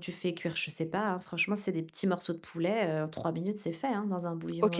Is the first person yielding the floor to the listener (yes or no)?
yes